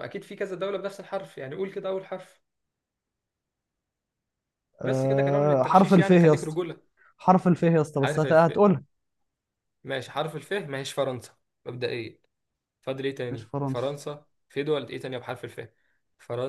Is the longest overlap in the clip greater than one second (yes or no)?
yes